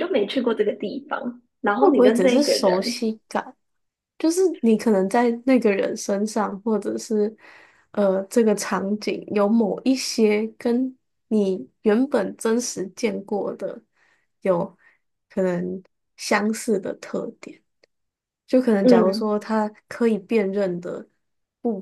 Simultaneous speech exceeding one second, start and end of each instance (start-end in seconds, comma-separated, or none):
1.8-3.0